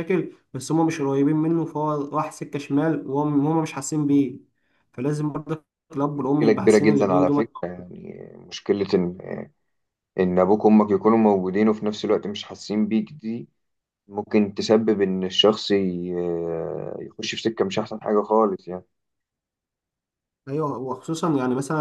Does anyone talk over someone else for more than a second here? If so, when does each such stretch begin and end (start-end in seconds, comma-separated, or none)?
6.2-7.4